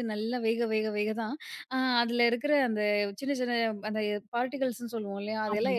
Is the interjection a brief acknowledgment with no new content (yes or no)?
yes